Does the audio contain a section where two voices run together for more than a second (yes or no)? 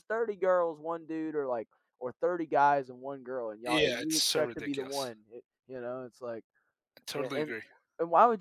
yes